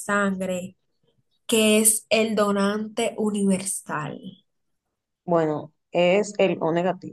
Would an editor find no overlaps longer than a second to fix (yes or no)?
yes